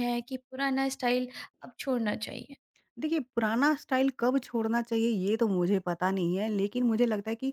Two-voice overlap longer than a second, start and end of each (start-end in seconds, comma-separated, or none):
none